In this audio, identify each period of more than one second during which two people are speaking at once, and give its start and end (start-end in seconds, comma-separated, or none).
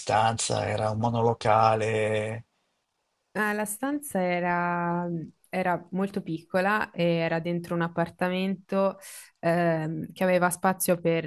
none